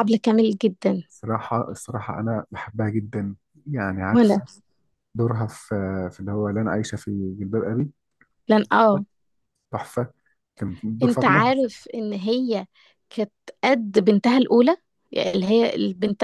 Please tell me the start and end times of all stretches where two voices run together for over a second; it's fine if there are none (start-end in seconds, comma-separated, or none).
none